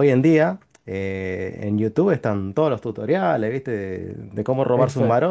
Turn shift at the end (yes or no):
no